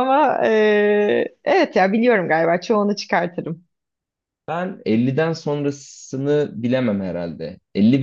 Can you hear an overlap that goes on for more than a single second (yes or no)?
no